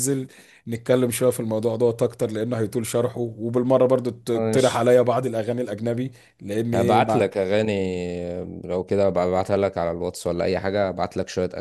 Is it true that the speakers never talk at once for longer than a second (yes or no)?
yes